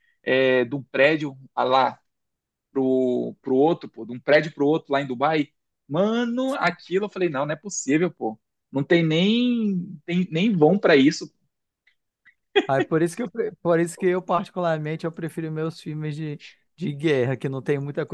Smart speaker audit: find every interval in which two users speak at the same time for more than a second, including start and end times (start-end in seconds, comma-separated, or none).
none